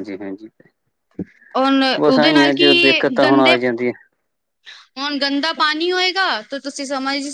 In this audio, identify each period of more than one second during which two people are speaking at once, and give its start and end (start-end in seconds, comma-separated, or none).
2.0-3.5